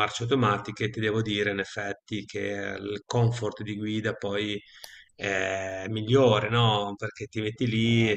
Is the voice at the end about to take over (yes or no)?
no